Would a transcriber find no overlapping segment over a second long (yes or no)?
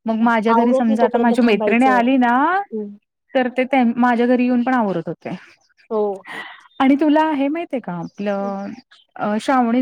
no